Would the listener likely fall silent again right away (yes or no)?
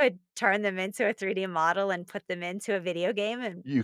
no